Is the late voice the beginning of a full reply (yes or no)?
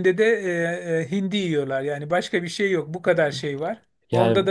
no